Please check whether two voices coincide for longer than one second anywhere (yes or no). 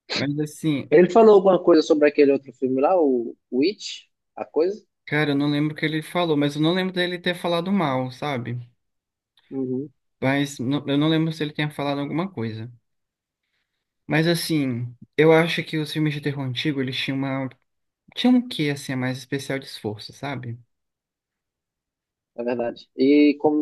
no